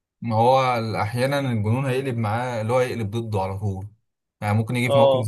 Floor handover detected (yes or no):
no